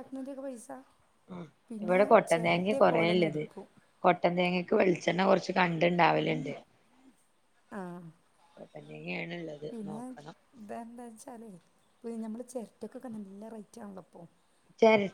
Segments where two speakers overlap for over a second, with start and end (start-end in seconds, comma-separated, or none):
1.8-3.4